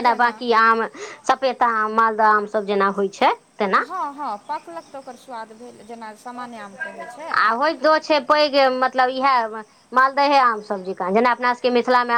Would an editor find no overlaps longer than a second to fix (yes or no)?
yes